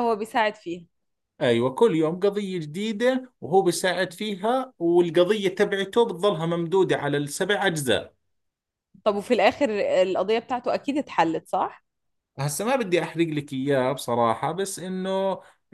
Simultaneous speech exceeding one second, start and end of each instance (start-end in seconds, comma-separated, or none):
none